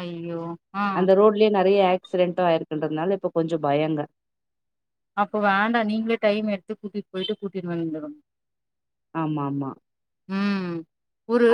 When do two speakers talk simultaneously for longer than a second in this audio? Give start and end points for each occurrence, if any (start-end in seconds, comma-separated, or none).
none